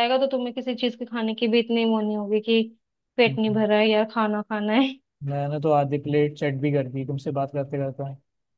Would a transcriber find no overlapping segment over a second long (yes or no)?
yes